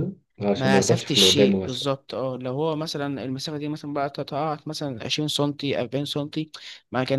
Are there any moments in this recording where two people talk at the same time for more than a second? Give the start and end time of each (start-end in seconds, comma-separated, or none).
0.6-1.9